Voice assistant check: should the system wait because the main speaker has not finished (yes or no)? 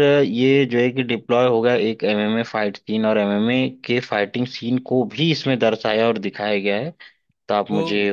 no